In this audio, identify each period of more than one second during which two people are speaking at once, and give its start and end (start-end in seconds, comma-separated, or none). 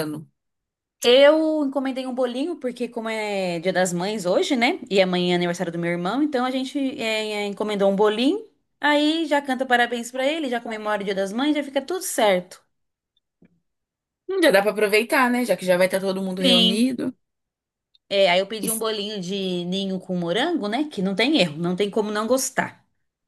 none